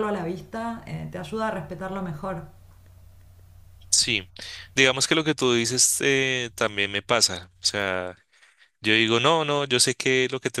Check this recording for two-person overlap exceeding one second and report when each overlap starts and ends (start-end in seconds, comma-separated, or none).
none